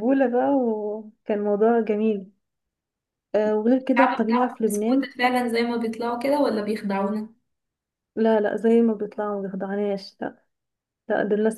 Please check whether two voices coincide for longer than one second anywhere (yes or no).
yes